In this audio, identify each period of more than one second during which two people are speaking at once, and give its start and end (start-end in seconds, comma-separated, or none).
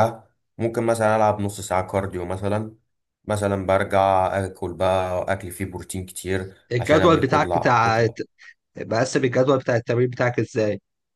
6.7-8.1